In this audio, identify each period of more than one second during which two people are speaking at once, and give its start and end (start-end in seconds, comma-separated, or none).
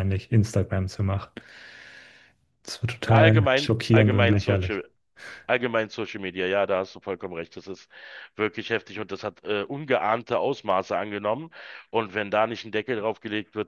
3.0-4.8